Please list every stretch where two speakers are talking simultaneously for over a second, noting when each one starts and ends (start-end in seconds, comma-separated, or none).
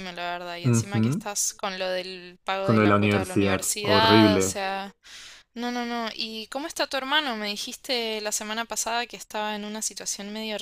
2.6-4.6